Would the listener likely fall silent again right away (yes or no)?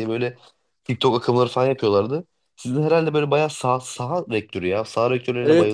no